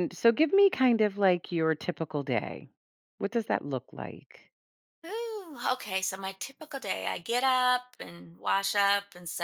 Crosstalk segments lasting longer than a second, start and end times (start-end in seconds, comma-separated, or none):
none